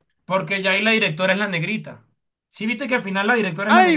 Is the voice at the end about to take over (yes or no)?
yes